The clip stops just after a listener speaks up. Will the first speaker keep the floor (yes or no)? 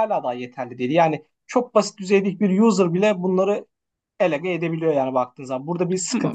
no